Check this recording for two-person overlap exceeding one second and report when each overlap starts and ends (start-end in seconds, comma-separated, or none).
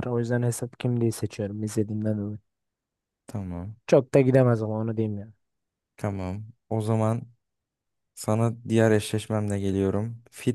none